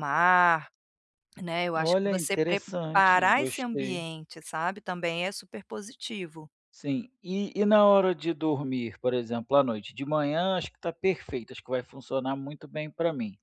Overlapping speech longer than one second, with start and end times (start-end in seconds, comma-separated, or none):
1.8-4.0